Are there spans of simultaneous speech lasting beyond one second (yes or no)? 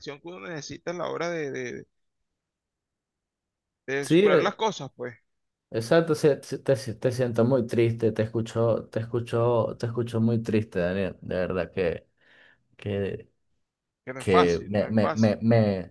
yes